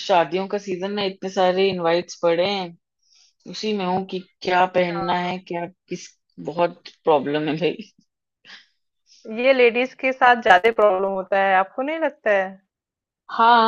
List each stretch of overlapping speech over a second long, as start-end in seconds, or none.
none